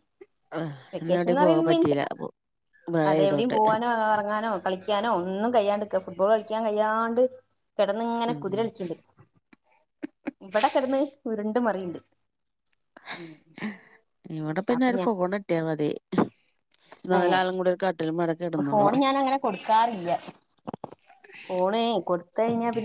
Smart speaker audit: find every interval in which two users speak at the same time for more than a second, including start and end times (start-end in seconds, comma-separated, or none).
17.2-19.0